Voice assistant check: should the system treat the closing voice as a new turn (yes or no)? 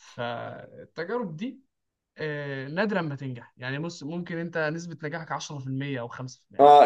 yes